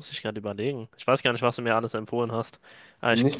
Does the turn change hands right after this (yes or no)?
yes